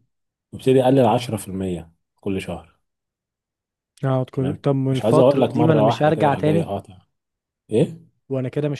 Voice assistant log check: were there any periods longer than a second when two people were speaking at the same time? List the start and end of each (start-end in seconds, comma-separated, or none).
4.3-6.7